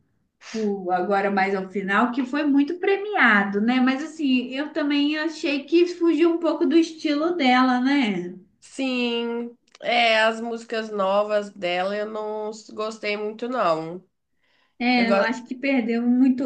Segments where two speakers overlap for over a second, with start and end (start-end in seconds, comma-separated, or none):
none